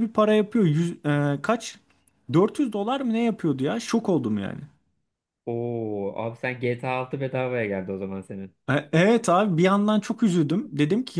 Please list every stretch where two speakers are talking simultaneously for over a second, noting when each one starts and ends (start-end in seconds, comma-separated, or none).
none